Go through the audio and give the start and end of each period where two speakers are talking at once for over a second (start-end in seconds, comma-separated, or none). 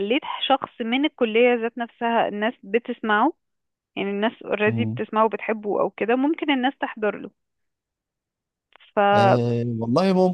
none